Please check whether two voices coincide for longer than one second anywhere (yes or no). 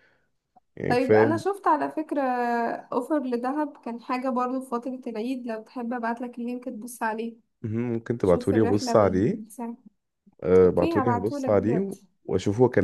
yes